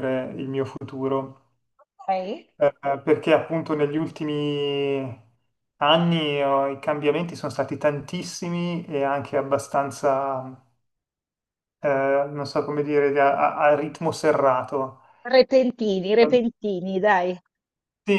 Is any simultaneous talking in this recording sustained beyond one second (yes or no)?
no